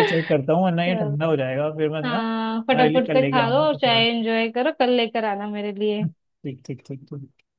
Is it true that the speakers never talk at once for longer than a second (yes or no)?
no